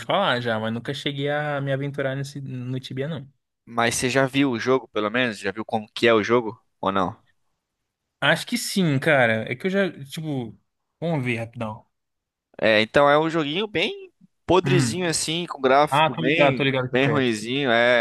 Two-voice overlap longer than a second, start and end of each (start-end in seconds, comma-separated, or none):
15.9-17.5